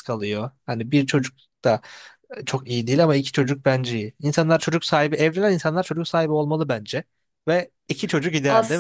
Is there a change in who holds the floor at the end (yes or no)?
yes